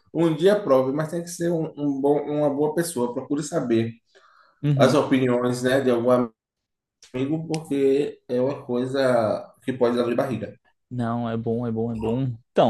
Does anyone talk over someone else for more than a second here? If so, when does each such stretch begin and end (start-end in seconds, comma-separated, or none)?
none